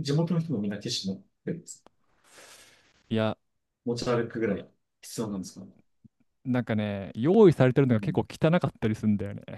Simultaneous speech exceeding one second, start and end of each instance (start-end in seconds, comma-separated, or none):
none